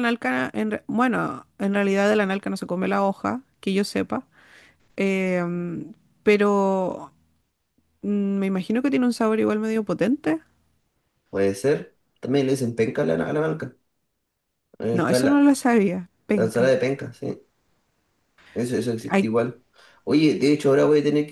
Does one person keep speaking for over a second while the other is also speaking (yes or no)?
no